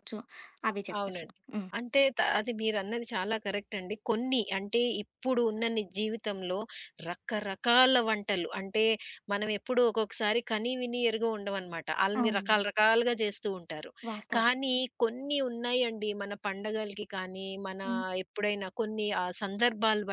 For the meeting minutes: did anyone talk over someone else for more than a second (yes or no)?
no